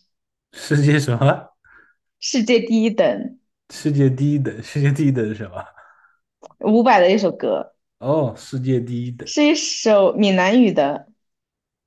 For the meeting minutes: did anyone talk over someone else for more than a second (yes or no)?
no